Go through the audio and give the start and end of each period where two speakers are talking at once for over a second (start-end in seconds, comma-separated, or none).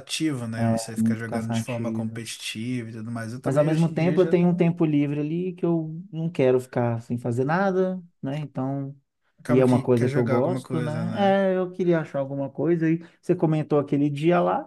0.7-2.2, 3.4-4.7, 9.5-11.1